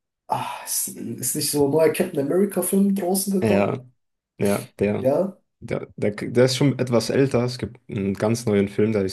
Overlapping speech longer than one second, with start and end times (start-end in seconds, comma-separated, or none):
none